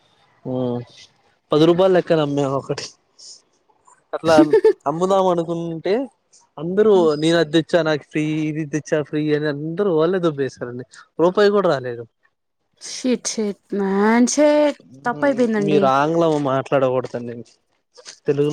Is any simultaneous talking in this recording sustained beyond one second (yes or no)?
no